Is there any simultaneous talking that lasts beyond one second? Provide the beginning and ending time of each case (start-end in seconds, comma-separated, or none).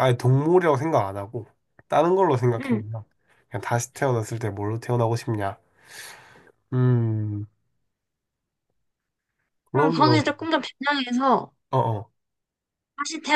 none